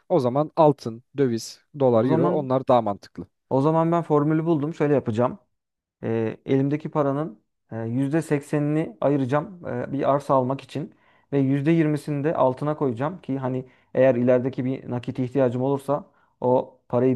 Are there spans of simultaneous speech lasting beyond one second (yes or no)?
no